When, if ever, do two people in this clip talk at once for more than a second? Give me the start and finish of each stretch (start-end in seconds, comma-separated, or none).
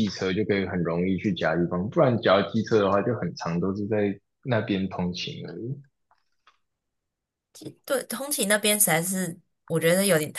none